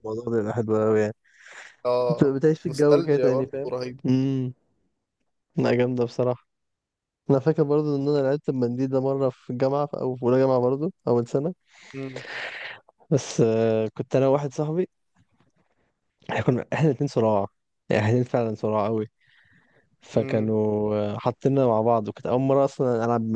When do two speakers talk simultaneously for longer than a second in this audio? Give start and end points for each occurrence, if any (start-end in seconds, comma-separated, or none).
2.1-4.0